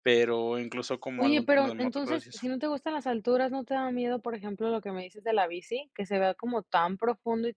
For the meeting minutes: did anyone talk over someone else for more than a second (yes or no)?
yes